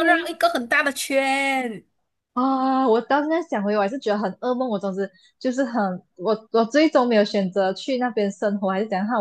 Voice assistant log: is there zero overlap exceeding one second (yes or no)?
yes